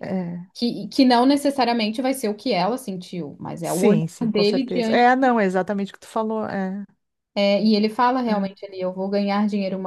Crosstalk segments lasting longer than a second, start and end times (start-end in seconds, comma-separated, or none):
3.6-5.3